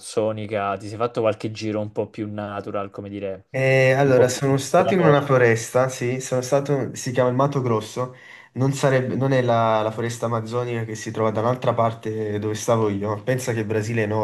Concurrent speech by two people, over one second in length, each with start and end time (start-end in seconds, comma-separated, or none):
4.0-5.2